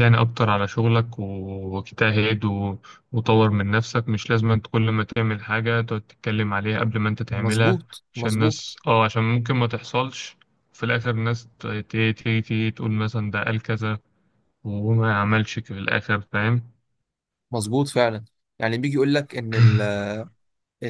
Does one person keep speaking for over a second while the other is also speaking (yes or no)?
yes